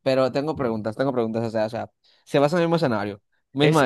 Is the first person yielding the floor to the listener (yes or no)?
yes